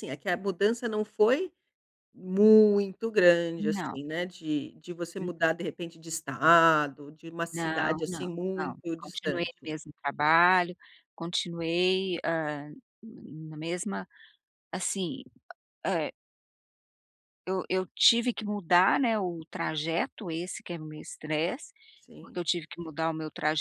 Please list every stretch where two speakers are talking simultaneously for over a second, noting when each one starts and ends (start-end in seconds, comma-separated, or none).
7.5-9.7